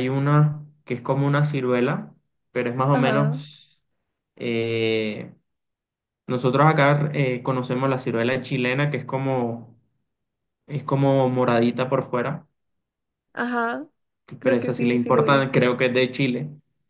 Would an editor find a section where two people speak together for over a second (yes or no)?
yes